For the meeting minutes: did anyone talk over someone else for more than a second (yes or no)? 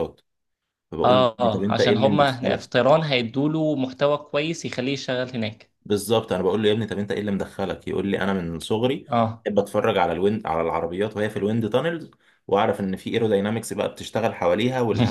yes